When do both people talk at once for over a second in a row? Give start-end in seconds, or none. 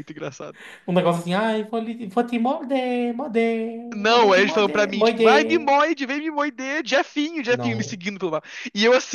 3.9-5.7